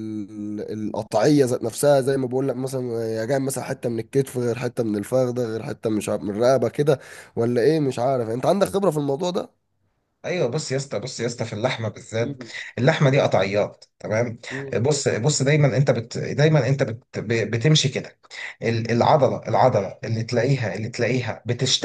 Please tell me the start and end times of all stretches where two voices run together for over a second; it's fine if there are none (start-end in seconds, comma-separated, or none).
none